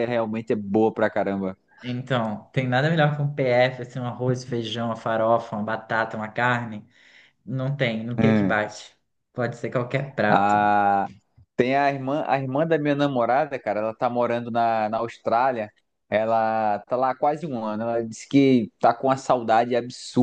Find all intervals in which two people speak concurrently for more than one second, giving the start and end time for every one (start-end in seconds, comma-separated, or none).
none